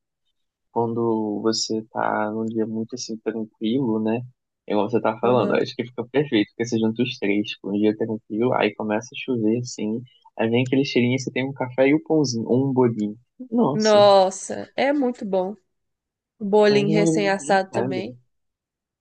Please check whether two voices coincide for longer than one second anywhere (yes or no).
yes